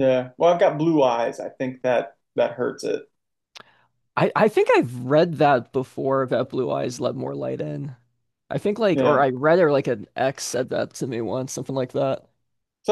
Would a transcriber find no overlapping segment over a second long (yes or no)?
yes